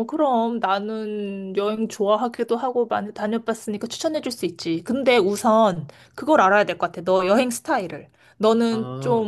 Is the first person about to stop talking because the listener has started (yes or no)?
no